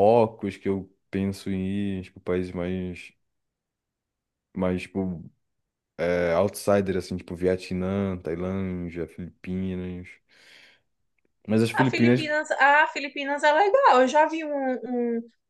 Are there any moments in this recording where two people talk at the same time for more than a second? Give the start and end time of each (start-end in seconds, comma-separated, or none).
none